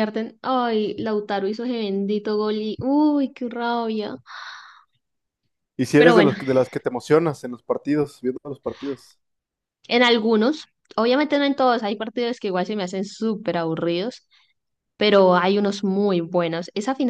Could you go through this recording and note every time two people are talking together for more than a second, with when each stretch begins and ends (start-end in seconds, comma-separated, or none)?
none